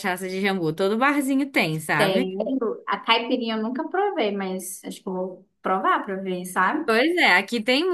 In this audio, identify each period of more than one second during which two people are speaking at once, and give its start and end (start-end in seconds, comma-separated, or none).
none